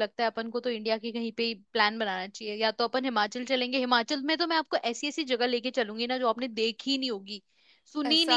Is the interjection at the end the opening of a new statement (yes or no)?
no